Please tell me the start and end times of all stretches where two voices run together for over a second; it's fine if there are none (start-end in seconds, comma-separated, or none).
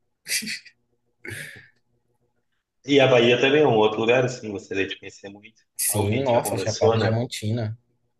5.8-7.1